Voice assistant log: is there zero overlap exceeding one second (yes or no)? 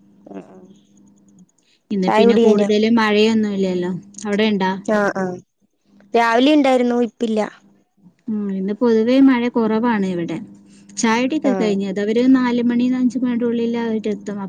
yes